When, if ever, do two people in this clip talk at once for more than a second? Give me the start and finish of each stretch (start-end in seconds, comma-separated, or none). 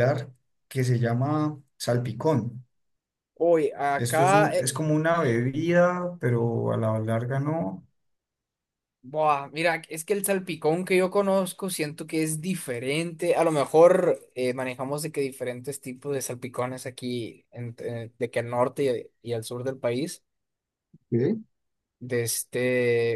none